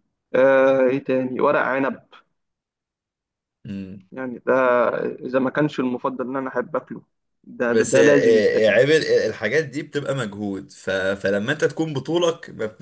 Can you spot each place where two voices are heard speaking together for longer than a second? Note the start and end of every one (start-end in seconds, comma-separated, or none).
none